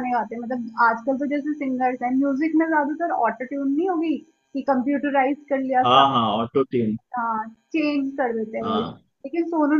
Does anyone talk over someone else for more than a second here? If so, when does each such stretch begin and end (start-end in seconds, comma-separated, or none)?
none